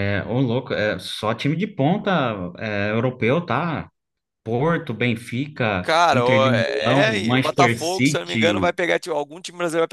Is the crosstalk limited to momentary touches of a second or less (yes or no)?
no